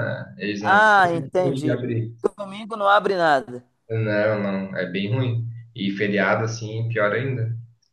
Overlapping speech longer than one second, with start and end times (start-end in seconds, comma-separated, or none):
0.6-1.8